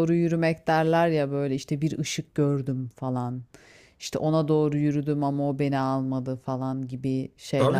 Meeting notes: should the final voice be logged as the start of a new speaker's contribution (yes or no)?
yes